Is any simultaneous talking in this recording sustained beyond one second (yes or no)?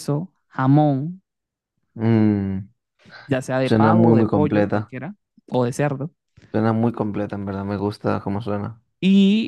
yes